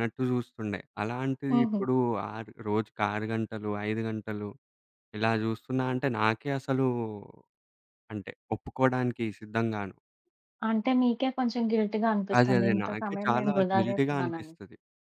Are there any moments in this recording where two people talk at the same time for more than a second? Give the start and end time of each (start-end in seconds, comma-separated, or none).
12.4-14.5